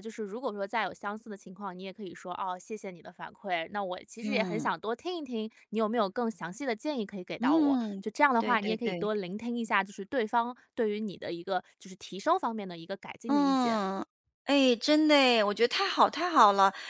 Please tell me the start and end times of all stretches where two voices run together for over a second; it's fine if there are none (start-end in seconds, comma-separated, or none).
7.4-9.1